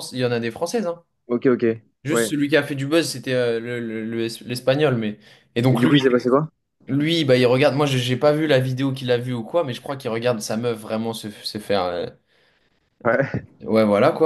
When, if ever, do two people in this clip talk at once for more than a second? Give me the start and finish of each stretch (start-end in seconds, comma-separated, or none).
none